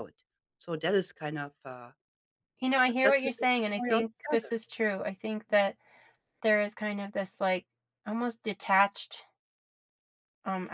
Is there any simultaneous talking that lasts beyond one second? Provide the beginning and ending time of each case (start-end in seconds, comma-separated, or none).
2.8-4.5